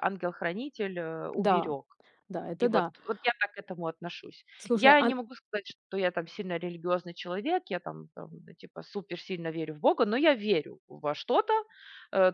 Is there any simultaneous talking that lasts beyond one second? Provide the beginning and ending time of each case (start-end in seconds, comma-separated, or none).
none